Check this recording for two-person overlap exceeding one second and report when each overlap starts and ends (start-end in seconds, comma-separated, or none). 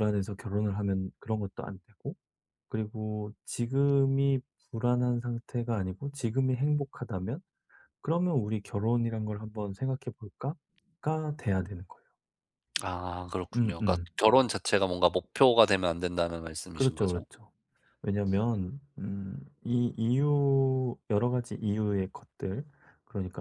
none